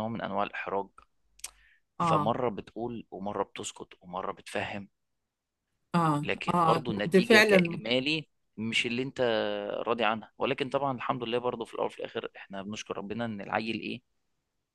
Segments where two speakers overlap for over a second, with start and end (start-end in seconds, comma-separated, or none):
6.2-7.8